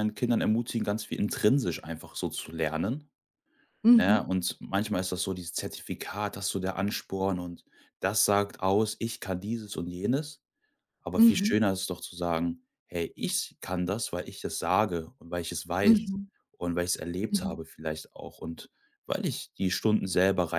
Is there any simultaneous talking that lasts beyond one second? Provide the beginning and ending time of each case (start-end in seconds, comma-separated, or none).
none